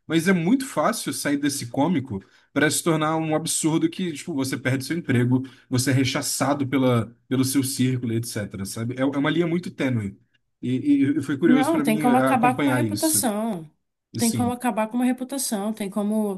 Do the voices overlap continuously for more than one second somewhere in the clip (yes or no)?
yes